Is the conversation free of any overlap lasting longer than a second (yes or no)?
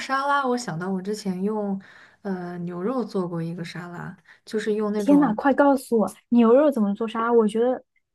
yes